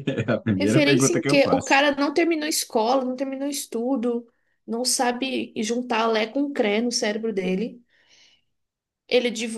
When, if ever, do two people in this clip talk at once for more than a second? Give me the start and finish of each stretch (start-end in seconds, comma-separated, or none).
0.6-1.8